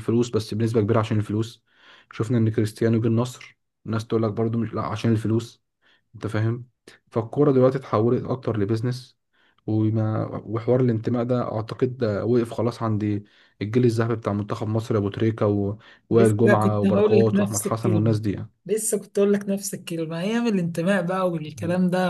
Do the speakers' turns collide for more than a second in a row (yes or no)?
yes